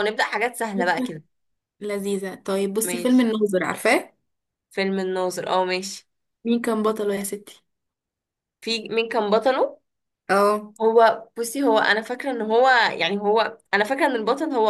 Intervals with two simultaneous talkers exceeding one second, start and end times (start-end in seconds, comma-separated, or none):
none